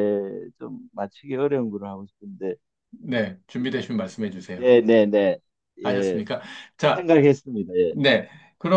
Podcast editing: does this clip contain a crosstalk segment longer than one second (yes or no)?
no